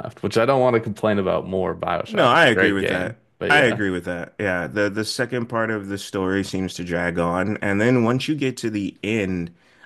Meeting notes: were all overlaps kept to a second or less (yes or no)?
no